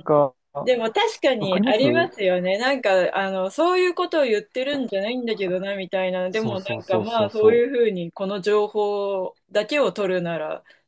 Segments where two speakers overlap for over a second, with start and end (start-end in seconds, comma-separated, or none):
6.3-7.7